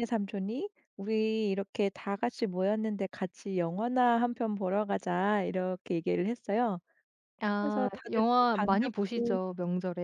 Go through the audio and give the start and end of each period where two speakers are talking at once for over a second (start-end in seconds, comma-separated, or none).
7.6-9.4